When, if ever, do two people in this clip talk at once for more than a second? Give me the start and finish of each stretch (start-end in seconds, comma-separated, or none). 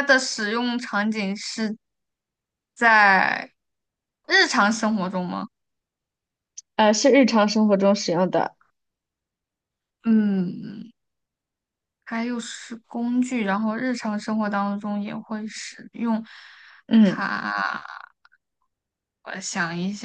none